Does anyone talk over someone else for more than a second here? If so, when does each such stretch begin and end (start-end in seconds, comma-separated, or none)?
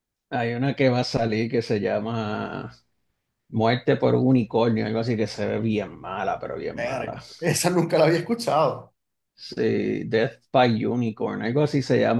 none